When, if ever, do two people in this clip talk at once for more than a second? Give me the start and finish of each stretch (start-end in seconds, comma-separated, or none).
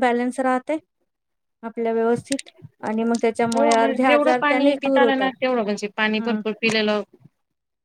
3.5-5.3